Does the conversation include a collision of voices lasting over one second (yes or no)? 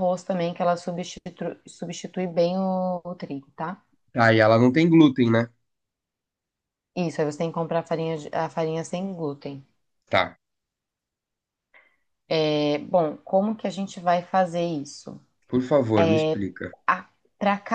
no